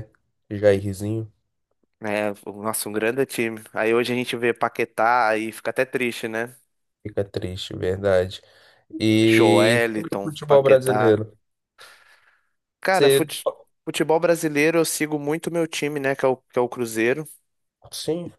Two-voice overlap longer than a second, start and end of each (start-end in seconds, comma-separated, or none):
9.3-11.2